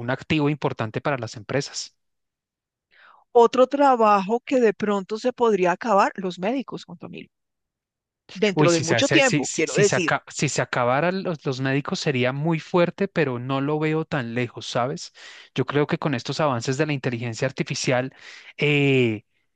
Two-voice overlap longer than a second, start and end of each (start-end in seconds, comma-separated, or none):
8.5-10.1